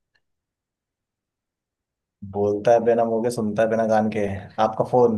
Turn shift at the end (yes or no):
yes